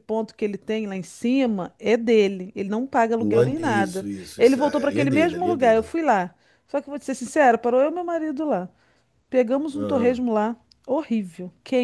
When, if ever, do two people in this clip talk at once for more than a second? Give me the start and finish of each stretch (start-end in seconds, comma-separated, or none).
3.2-5.9